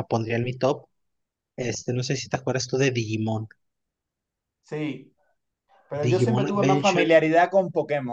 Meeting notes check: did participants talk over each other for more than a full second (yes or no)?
yes